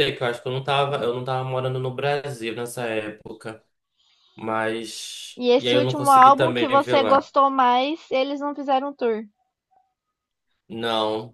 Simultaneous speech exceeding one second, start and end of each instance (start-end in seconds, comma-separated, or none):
5.4-7.3